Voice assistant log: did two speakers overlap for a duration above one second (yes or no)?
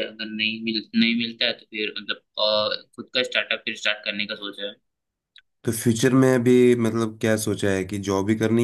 no